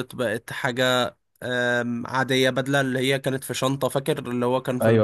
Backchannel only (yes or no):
no